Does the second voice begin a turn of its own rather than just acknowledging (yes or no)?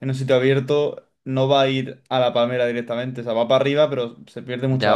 yes